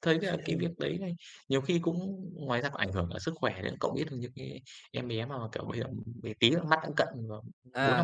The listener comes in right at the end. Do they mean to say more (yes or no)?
yes